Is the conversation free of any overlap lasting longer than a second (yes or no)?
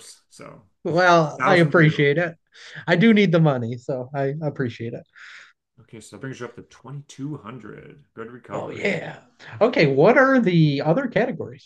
no